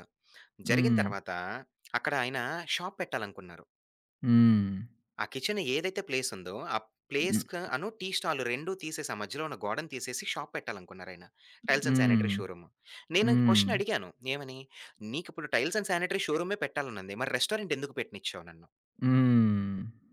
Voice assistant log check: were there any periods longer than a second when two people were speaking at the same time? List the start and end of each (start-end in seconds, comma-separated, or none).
none